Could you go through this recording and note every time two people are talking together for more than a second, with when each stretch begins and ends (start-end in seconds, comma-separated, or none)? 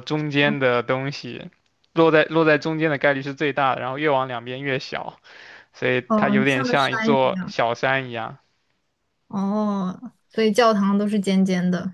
6.1-7.5